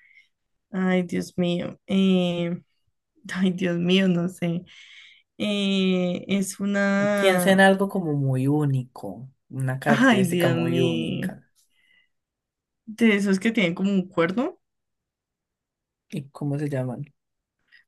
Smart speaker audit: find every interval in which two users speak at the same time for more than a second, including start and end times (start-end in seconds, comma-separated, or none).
9.9-11.3